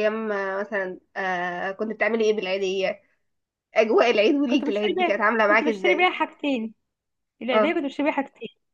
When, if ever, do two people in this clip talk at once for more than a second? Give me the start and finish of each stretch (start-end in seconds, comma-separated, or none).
4.5-6.1